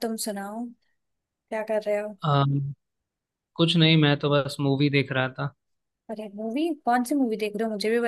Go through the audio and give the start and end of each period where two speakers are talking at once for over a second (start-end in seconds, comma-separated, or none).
none